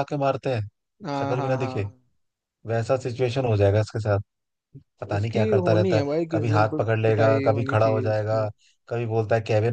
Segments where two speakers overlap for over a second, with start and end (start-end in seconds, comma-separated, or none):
5.2-8.5